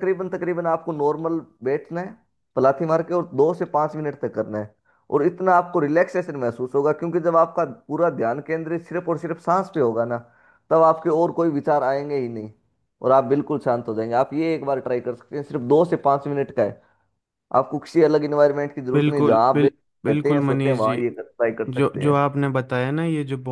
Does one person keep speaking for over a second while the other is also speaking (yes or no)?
yes